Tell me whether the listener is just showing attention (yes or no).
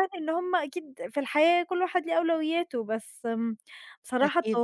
yes